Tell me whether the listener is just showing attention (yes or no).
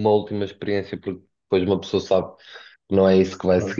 yes